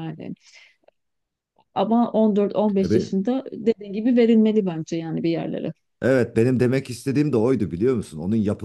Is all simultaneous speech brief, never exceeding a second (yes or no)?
yes